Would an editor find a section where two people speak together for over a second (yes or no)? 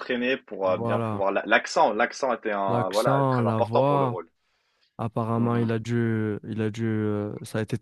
yes